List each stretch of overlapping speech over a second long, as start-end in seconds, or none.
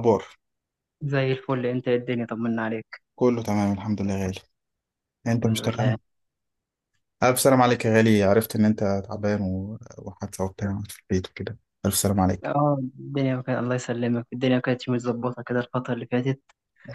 none